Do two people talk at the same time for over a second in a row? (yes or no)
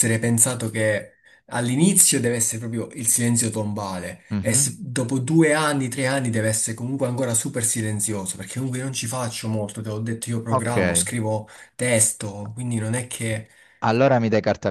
no